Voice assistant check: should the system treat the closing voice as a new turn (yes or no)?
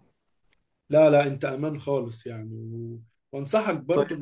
no